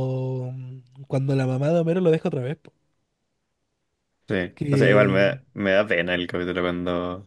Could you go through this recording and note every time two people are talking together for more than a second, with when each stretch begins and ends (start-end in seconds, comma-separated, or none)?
none